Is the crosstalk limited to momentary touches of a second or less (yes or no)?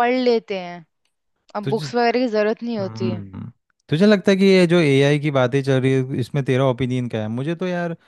yes